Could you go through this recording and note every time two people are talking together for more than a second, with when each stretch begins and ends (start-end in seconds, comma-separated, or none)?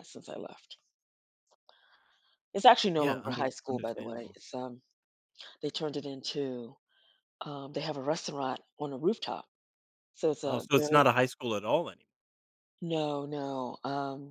3.0-4.4